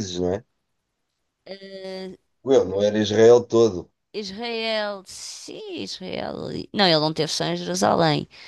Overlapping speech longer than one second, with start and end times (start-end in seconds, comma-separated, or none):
none